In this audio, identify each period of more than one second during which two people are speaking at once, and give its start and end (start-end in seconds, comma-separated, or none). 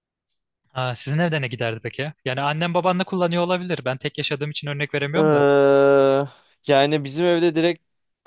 none